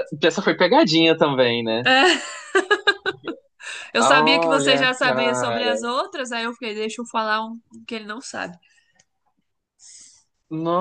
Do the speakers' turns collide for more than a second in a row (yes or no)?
yes